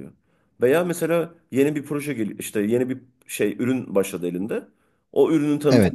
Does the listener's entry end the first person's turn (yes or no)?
no